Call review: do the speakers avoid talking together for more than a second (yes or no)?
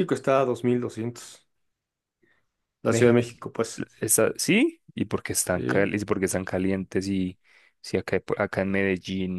yes